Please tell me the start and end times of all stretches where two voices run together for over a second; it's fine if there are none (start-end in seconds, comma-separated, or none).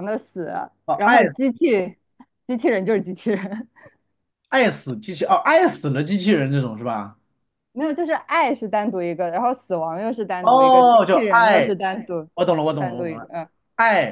10.4-11.7